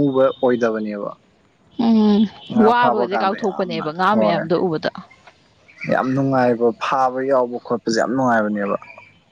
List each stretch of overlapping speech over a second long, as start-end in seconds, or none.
2.7-4.4